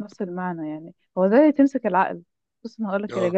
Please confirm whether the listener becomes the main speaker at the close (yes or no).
no